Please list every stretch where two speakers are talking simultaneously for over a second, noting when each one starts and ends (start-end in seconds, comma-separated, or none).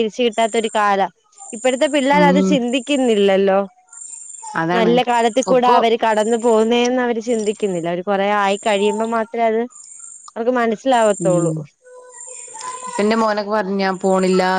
none